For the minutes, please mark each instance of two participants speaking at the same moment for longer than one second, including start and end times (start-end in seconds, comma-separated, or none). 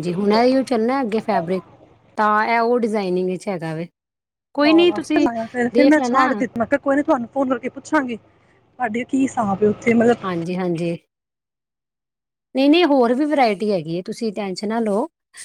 none